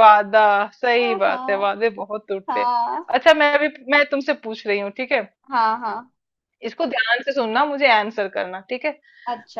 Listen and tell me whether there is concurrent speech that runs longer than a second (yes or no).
no